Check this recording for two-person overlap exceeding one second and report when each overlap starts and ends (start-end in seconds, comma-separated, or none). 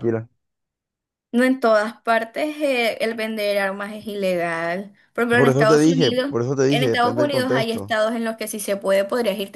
5.3-8.0